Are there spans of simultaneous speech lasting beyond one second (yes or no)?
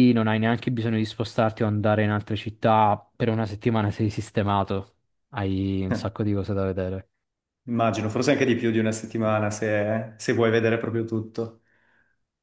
no